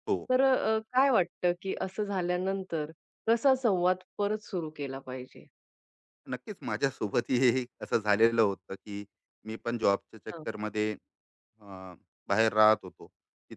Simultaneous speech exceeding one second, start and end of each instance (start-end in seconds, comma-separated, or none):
none